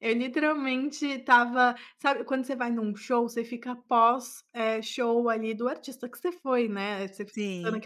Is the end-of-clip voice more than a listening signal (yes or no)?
no